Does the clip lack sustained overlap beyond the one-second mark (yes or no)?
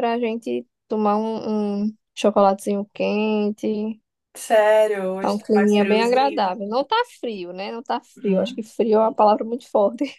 no